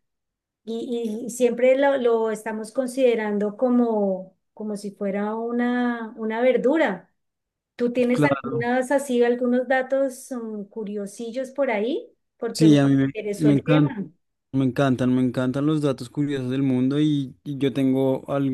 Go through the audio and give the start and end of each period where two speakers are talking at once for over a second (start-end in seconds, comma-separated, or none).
12.5-13.9